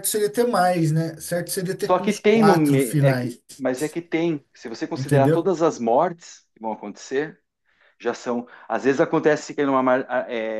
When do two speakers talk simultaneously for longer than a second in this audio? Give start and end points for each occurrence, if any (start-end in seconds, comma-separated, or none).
1.9-3.4